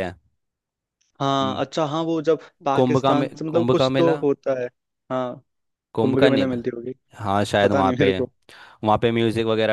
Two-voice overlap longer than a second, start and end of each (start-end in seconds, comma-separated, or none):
2.8-4.2